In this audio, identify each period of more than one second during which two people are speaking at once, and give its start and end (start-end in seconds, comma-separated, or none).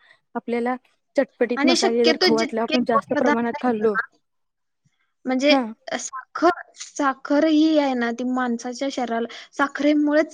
1.6-4.0